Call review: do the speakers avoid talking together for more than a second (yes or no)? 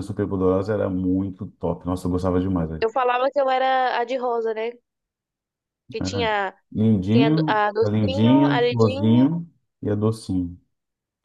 no